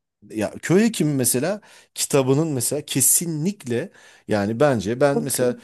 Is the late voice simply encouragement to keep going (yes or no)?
yes